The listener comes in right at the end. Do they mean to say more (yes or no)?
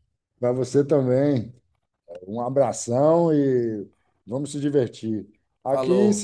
no